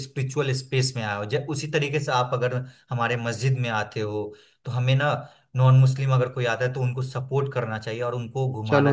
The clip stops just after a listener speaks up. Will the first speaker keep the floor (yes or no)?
no